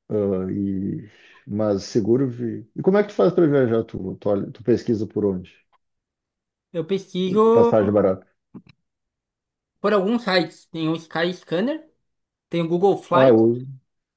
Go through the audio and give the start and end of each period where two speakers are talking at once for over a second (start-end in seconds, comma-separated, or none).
none